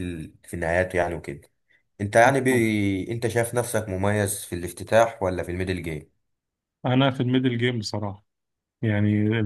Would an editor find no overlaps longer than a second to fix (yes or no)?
yes